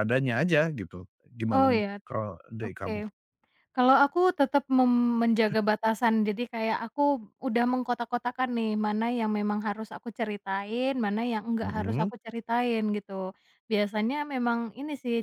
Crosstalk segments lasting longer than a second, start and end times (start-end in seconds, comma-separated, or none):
none